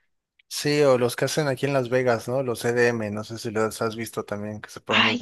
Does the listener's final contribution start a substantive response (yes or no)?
yes